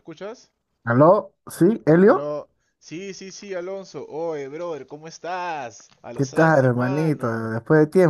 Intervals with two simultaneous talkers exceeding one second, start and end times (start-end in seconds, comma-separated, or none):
6.1-7.5